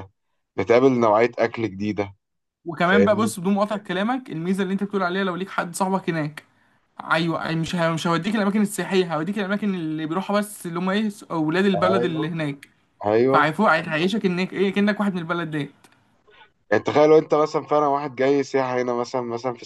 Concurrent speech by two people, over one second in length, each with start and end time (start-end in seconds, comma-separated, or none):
none